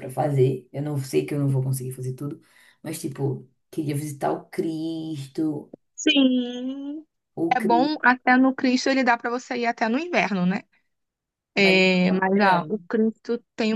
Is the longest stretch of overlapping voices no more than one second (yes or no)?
no